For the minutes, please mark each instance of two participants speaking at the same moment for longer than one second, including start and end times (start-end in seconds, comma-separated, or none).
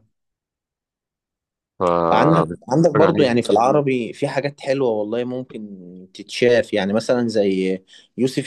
2.1-3.3